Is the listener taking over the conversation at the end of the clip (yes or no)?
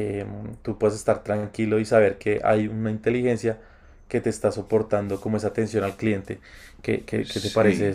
yes